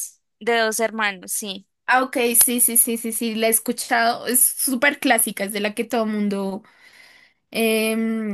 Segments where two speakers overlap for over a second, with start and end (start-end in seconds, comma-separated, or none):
none